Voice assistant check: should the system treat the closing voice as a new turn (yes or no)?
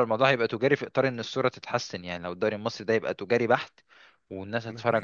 no